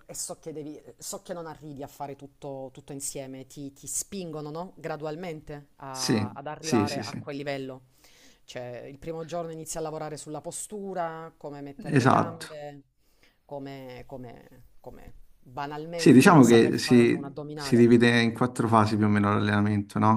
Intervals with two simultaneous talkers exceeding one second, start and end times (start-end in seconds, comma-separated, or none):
5.9-7.2, 15.9-17.9